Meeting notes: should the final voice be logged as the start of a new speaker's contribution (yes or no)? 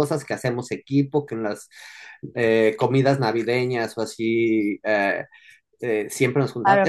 no